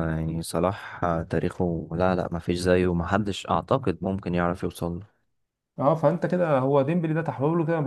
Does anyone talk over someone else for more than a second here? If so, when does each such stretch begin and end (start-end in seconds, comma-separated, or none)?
none